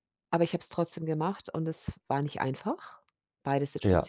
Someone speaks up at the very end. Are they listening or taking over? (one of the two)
listening